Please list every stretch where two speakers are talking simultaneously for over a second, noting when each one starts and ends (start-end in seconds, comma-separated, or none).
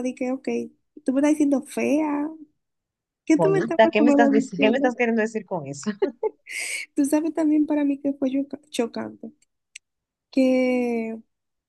3.4-4.9